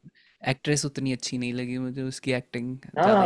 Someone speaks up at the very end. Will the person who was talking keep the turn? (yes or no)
no